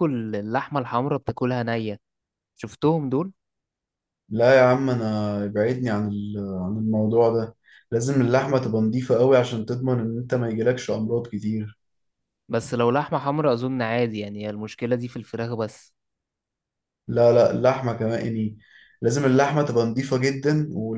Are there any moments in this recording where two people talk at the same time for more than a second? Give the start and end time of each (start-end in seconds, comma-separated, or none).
none